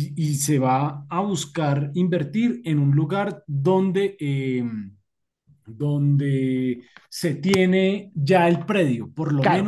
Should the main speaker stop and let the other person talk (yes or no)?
no